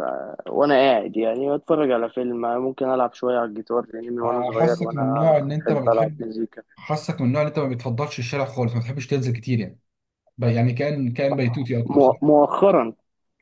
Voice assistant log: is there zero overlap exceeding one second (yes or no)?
no